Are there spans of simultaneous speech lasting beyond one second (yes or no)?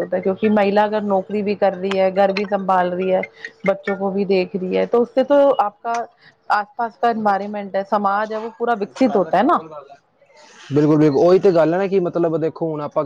no